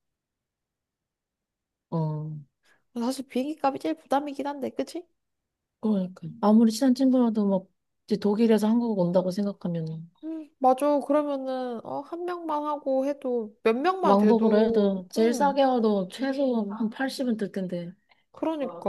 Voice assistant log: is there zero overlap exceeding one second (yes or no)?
no